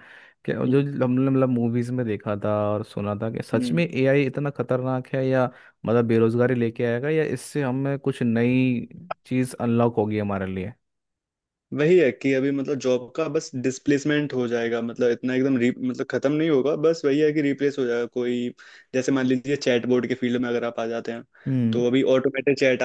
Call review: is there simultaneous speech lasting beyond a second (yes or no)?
no